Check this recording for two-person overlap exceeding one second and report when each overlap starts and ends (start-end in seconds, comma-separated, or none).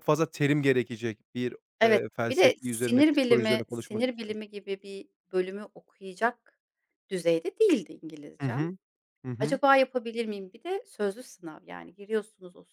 1.8-4.4